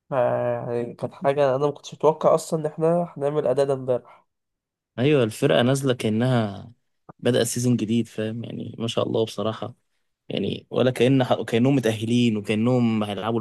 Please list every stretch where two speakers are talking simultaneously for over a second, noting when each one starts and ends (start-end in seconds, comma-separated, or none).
none